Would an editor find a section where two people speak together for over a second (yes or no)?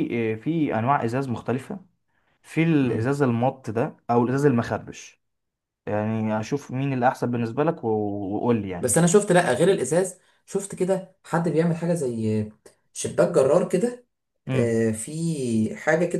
no